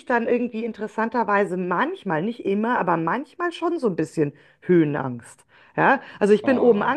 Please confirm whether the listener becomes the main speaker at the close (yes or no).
no